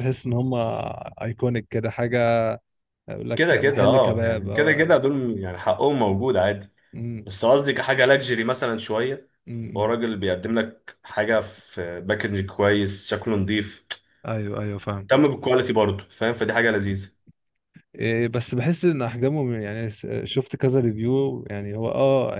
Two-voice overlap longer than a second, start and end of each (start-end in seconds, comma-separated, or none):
3.4-5.0